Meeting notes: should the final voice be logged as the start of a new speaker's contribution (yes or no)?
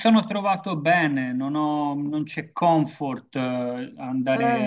no